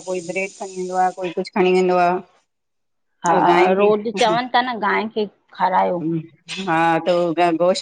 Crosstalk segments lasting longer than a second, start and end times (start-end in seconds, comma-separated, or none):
none